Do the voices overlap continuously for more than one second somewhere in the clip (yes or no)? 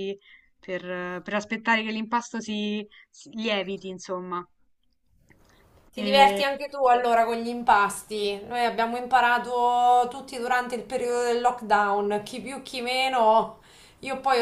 no